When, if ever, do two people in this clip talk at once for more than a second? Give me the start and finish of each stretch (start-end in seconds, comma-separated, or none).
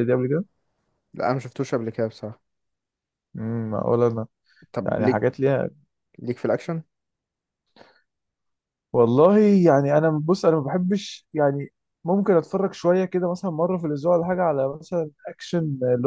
none